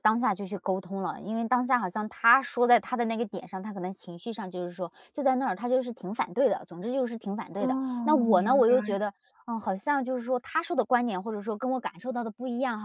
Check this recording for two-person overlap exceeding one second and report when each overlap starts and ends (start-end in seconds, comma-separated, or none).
7.6-9.1